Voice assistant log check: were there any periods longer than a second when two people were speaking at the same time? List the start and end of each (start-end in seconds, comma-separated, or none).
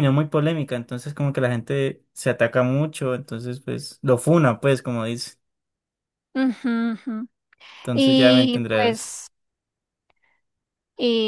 7.9-9.2